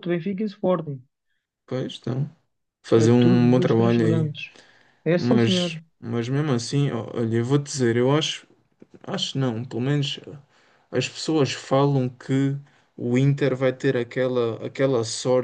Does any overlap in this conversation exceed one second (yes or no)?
yes